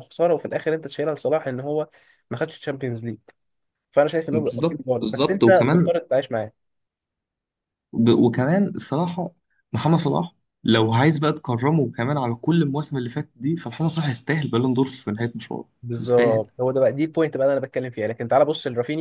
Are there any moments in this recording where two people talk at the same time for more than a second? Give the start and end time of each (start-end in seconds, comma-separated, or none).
4.3-6.0